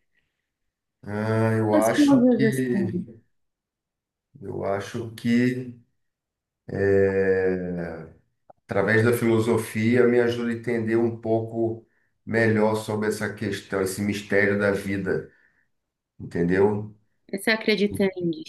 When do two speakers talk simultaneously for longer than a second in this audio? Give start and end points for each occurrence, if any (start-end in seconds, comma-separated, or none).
1.7-3.0